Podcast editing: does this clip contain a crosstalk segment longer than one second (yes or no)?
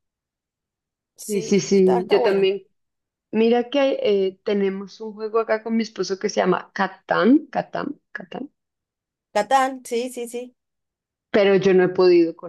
yes